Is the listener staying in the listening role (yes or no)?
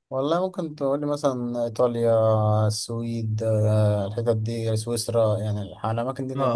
no